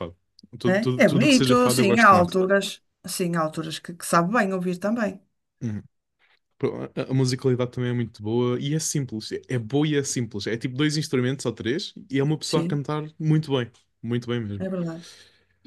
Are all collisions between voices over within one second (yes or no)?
no